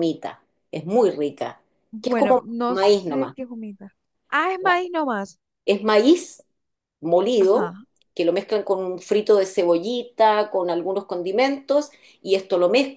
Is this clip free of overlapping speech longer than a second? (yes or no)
no